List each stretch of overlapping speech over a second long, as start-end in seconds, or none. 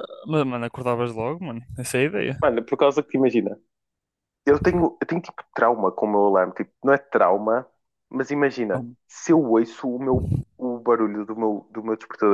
none